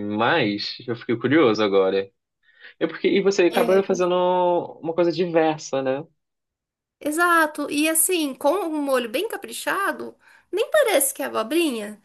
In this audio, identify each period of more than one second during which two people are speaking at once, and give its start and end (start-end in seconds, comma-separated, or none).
none